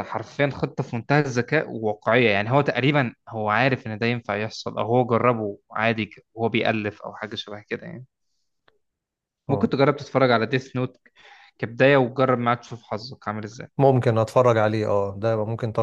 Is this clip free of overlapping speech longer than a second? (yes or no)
yes